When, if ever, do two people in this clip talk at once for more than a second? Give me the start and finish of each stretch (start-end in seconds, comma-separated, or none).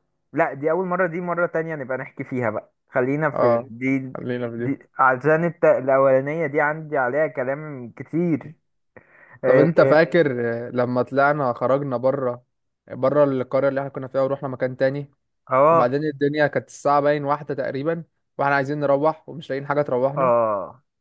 none